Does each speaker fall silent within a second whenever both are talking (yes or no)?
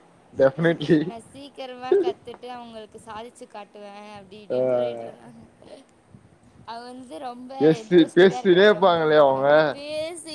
no